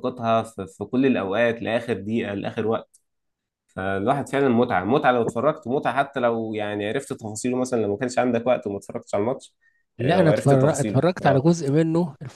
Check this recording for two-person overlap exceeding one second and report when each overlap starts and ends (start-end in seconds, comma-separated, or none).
10.0-11.5